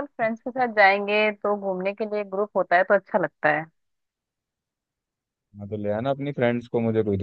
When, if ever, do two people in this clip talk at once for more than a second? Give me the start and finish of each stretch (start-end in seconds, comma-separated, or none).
none